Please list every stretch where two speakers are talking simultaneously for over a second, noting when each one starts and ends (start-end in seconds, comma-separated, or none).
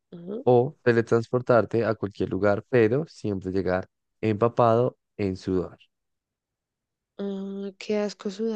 none